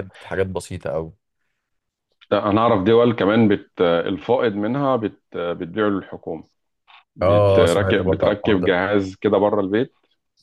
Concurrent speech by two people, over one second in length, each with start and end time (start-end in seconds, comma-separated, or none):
7.2-8.7